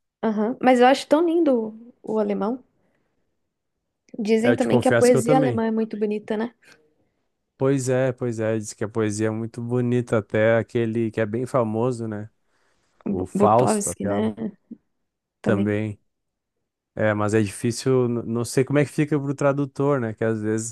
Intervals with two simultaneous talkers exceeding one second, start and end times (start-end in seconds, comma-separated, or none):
4.4-5.6, 13.1-14.3